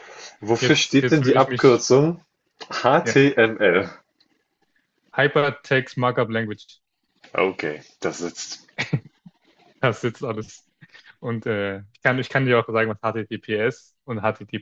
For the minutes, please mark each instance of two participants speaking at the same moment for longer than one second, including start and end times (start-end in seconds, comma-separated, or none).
0.6-1.8